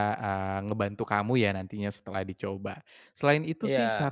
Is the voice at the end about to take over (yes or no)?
no